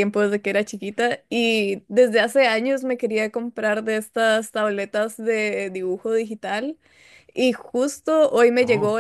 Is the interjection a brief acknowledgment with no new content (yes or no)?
yes